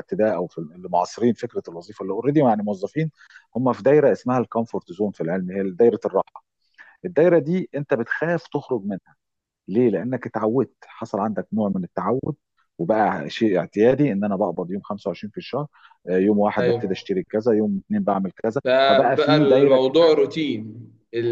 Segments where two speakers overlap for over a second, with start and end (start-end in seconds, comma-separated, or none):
18.6-20.2